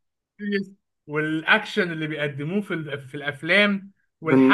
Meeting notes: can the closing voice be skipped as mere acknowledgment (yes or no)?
yes